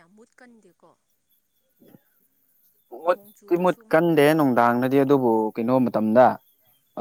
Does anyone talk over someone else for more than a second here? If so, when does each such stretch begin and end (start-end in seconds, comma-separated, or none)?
3.1-4.6